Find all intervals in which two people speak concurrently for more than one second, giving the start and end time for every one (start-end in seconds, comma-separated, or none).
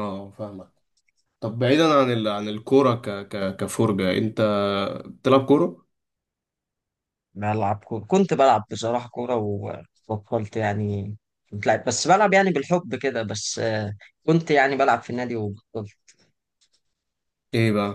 none